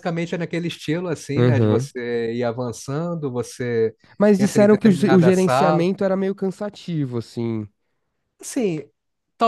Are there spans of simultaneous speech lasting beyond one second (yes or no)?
yes